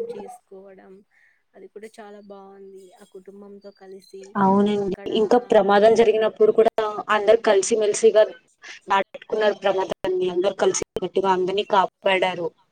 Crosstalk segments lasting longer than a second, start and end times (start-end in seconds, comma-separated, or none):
none